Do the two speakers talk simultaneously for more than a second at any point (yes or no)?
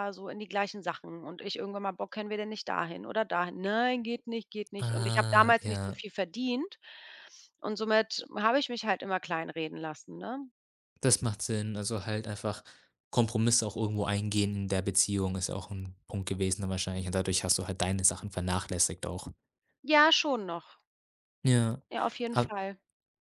yes